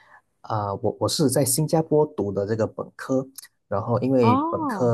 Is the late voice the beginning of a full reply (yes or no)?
no